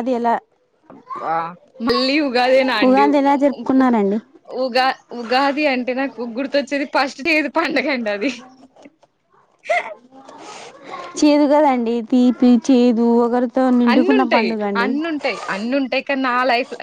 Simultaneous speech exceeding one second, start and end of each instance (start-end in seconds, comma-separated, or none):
none